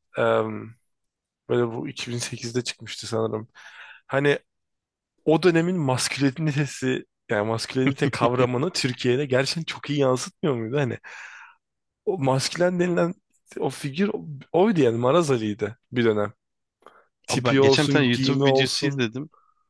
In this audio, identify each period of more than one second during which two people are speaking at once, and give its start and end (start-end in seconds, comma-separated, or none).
17.3-19.0